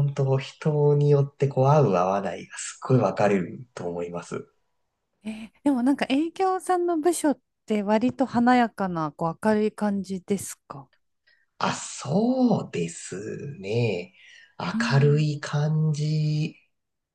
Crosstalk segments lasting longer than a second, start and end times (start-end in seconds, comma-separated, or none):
none